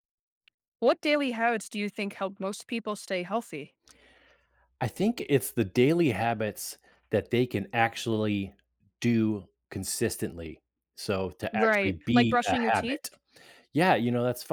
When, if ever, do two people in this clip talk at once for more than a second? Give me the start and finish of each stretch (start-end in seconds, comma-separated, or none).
11.5-13.0